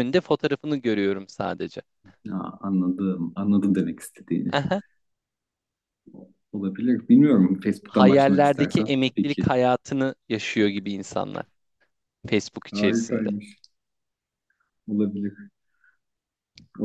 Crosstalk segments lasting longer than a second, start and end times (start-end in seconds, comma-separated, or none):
7.9-9.5